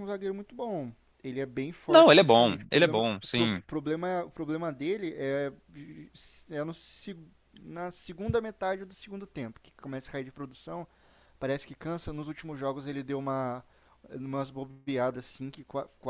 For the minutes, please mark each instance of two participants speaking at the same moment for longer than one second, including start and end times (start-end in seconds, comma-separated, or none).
1.9-3.6